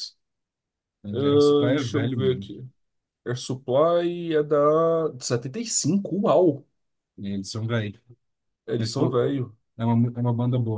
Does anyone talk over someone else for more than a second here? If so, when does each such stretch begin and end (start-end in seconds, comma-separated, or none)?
1.1-2.5